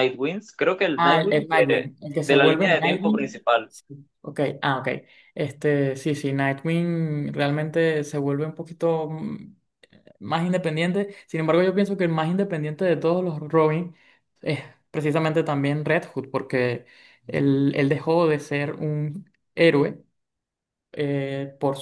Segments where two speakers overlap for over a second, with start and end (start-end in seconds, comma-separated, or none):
0.9-3.7